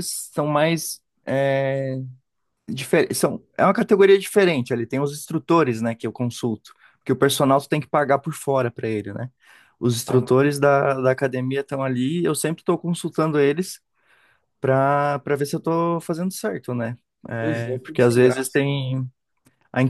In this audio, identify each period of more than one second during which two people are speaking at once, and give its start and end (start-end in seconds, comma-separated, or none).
17.4-18.6